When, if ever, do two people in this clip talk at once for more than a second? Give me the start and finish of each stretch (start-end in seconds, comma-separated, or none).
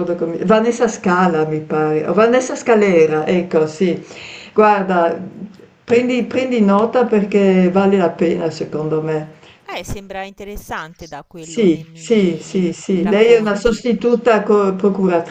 11.3-13.9